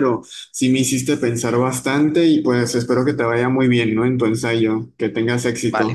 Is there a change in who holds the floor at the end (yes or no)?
yes